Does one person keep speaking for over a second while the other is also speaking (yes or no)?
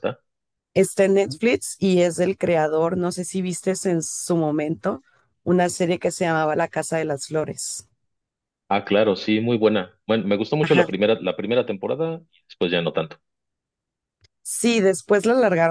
no